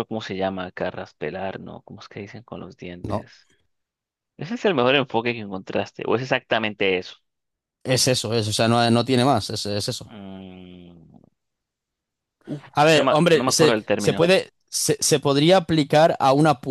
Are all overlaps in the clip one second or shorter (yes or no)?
no